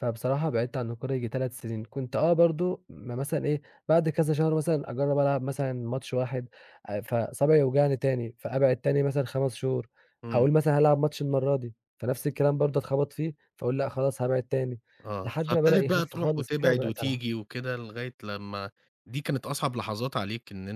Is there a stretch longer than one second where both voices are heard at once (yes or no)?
yes